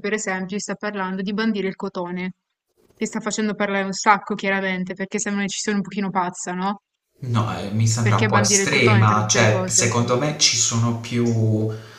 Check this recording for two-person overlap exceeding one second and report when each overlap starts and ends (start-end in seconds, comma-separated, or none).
8.0-9.9